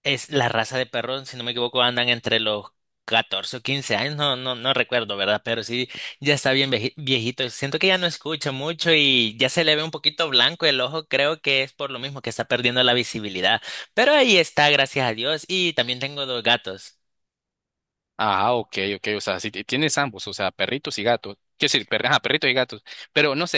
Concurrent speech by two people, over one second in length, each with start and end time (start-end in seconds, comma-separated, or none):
none